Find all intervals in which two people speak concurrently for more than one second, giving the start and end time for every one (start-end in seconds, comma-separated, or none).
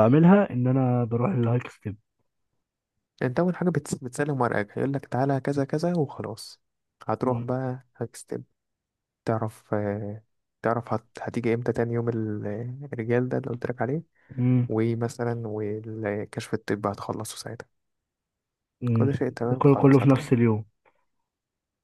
18.9-20.3